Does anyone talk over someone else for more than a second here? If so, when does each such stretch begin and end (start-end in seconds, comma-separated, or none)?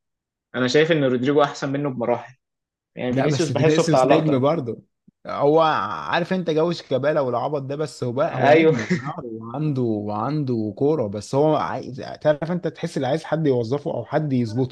3.1-4.4